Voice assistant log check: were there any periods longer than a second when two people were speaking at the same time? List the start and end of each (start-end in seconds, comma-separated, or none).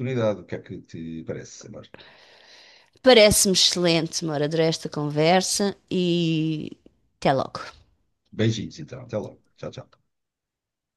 none